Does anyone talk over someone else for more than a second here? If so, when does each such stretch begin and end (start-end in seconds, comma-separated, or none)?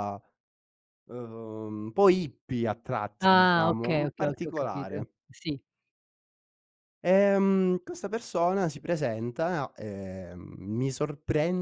3.2-5.1